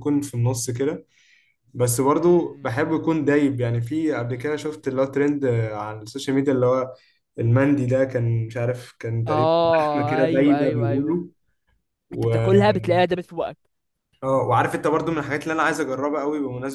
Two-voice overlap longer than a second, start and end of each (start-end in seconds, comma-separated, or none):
9.2-11.2